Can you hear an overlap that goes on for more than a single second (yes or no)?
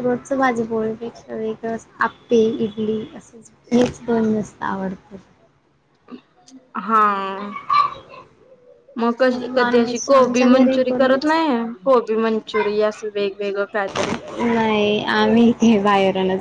yes